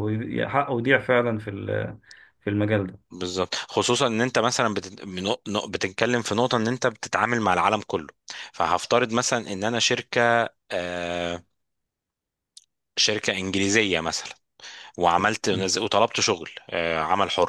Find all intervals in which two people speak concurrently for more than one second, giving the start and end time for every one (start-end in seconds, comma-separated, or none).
none